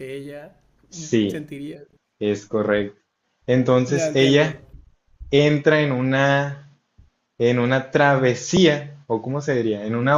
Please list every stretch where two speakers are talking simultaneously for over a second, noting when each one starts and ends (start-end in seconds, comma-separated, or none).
none